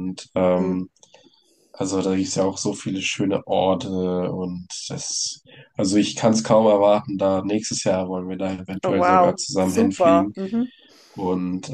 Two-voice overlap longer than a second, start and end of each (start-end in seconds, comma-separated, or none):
8.8-10.3